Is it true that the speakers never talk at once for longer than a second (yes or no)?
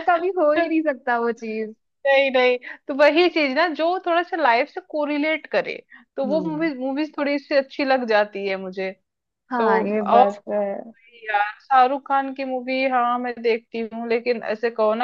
yes